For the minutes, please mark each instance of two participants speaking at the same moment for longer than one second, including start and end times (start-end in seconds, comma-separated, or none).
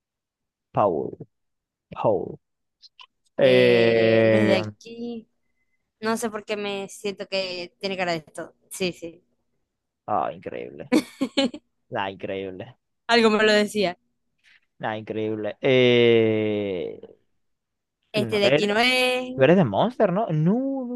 3.4-4.6